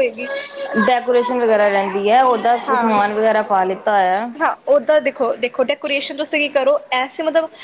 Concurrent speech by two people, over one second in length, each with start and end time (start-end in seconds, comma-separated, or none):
none